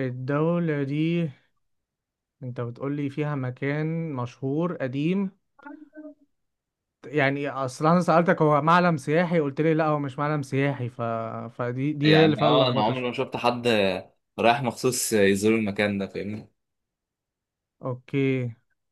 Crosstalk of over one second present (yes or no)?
yes